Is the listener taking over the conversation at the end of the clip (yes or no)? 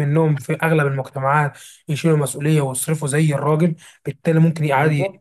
no